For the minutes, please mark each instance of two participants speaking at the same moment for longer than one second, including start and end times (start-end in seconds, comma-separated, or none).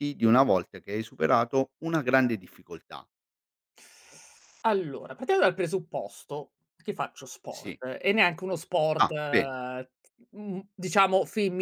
none